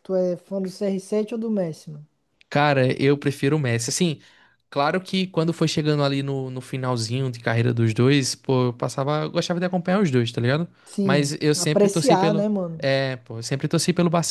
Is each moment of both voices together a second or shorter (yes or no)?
no